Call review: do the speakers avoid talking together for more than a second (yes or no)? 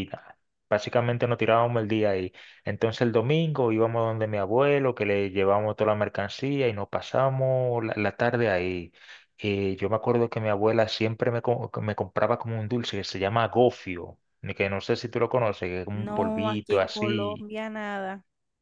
no